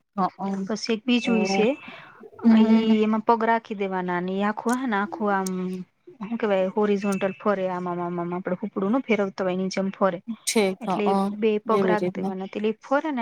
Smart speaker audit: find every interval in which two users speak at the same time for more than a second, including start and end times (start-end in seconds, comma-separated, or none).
none